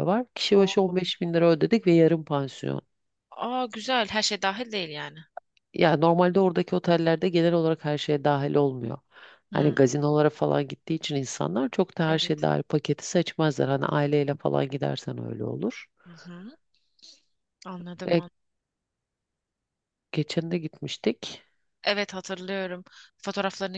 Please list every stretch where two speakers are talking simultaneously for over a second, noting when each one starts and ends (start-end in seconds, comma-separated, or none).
none